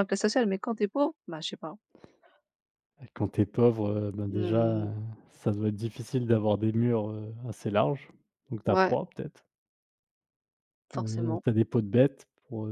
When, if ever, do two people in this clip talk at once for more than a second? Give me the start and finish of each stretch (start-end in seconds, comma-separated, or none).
none